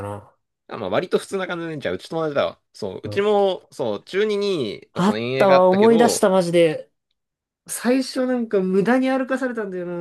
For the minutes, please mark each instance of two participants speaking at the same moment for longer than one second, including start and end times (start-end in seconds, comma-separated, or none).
4.9-6.3